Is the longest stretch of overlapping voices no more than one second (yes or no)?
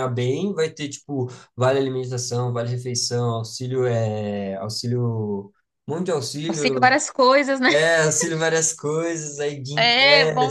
yes